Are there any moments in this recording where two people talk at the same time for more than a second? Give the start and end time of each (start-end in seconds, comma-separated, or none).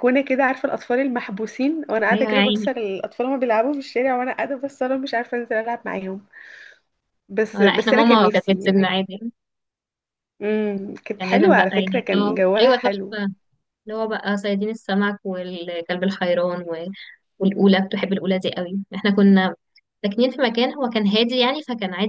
7.5-8.9, 11.2-13.2